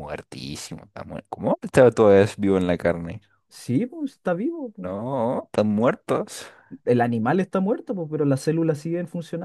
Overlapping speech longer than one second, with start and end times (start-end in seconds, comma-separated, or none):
none